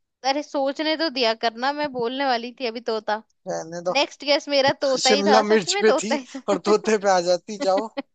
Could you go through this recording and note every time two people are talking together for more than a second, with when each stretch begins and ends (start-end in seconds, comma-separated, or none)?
5.0-7.1